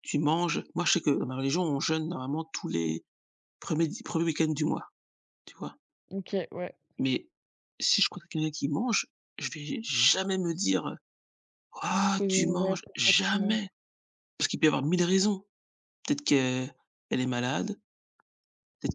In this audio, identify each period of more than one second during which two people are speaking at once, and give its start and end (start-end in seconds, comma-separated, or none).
12.2-13.6